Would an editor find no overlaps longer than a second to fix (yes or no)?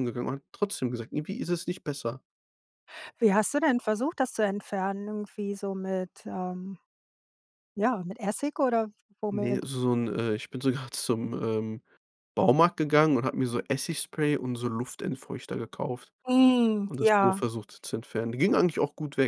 yes